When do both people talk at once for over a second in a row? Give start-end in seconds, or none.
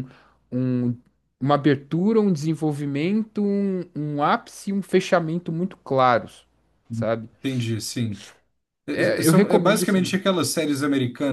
8.9-10.2